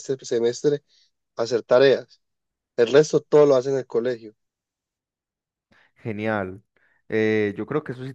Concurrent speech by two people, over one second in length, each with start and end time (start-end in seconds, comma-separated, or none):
none